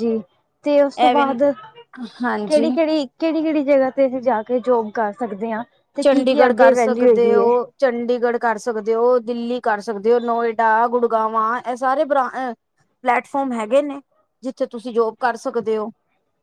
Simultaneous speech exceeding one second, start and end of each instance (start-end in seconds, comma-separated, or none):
6.0-7.5